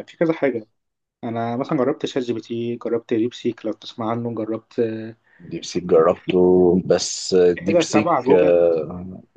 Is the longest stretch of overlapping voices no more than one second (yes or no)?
no